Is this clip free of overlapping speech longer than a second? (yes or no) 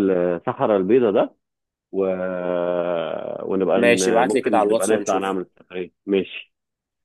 no